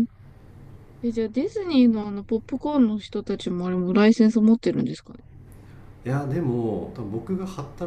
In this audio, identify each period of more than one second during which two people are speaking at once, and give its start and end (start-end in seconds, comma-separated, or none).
none